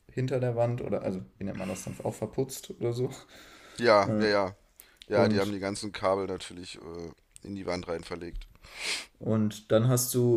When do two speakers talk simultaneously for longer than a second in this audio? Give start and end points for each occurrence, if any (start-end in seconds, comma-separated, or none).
none